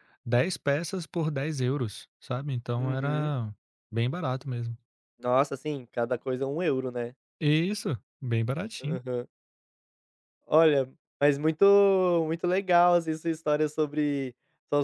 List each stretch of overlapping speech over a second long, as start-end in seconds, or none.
none